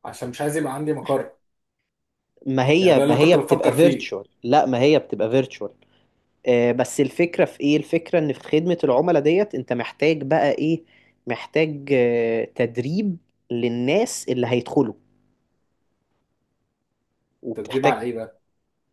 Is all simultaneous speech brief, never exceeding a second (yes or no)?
no